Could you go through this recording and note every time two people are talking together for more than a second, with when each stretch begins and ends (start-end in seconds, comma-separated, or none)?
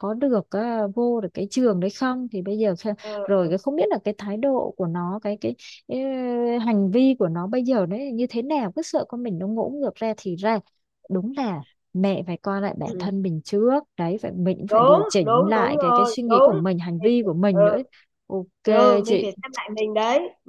14.7-16.6